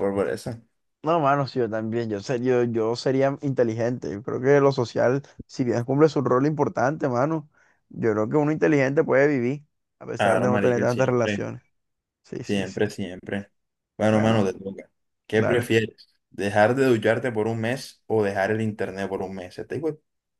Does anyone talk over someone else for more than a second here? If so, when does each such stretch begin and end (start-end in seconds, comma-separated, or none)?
10.2-11.4